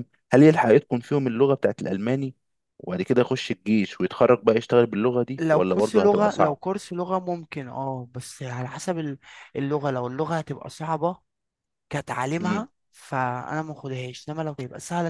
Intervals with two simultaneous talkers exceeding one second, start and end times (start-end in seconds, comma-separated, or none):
5.4-6.6